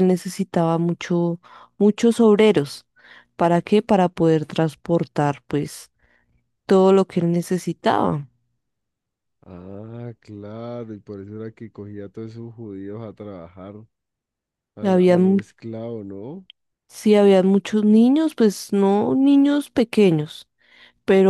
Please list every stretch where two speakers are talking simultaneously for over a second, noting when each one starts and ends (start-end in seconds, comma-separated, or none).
none